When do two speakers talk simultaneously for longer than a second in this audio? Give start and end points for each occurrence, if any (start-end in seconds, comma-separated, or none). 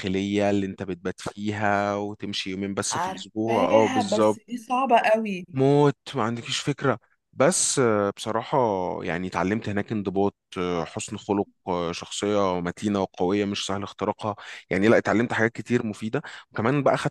2.9-4.6